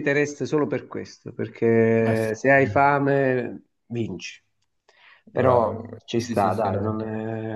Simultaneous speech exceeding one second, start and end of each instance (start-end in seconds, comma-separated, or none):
5.3-7.0